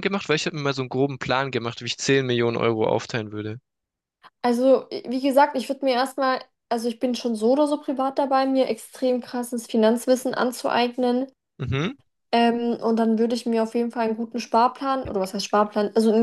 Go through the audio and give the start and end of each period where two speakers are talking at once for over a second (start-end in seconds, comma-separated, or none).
none